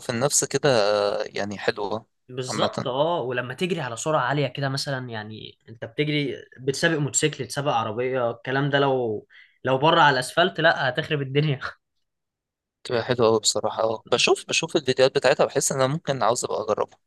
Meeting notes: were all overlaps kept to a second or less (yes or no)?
yes